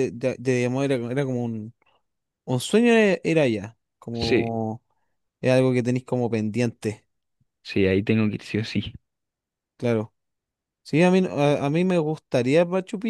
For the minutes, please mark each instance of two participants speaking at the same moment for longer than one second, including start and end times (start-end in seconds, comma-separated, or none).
none